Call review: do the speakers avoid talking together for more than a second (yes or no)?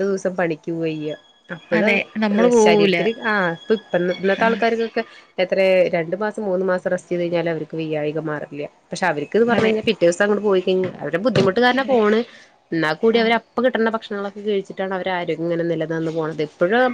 yes